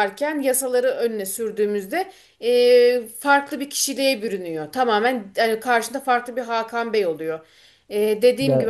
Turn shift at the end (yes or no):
yes